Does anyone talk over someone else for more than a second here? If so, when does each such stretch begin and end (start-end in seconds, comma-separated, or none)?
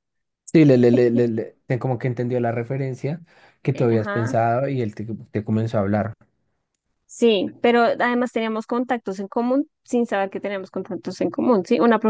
none